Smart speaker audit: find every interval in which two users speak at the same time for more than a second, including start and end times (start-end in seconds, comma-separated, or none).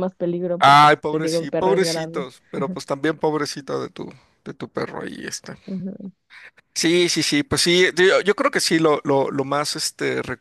0.6-2.3